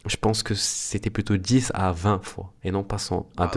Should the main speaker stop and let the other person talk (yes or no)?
yes